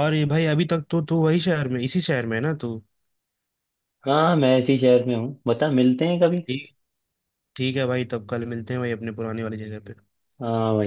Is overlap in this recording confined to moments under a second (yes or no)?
yes